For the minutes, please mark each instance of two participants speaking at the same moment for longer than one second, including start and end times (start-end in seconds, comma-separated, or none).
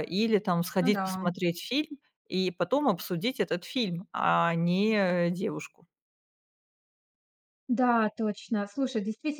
none